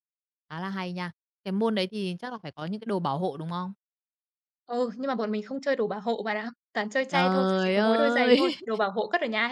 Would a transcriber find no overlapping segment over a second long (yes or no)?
no